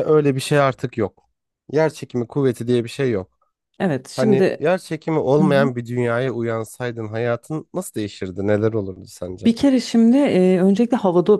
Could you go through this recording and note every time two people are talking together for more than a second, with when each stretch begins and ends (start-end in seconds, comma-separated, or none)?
none